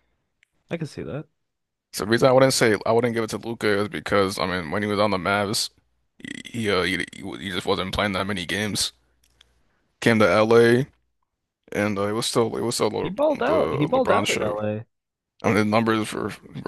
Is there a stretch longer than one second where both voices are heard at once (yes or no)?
yes